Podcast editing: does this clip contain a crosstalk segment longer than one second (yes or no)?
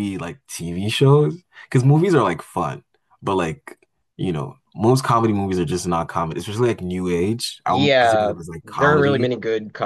yes